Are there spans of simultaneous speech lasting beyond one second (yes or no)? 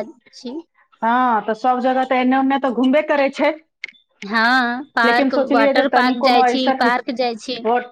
yes